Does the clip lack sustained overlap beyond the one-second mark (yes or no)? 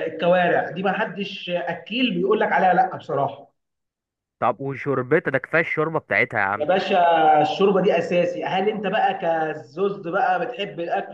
yes